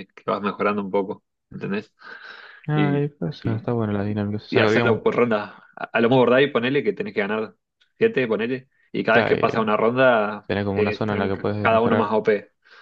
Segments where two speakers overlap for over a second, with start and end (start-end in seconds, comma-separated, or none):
10.5-12.2